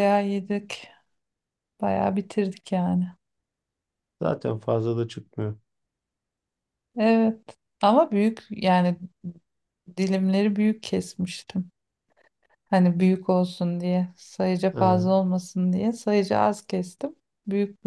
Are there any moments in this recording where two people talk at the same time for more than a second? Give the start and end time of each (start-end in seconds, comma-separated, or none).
none